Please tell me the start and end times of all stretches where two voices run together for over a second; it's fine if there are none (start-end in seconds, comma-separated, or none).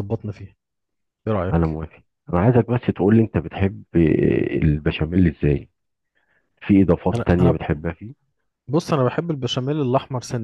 none